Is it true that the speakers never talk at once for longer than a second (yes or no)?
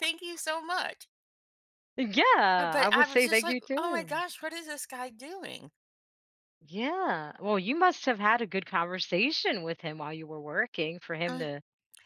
no